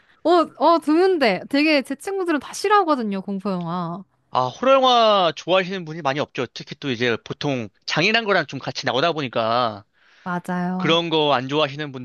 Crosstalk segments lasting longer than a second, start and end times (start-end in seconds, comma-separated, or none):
none